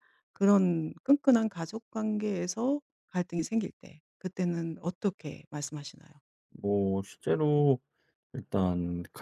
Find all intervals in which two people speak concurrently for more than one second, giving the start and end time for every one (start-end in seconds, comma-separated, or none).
none